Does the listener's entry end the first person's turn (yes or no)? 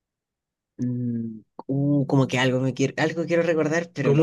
yes